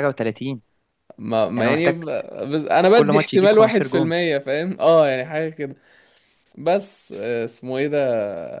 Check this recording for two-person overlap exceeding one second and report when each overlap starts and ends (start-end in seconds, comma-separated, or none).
2.9-4.1